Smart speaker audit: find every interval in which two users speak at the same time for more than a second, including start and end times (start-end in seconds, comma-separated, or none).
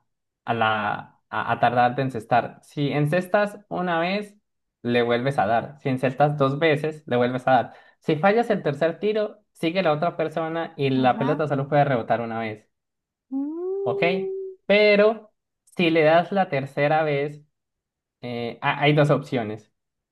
none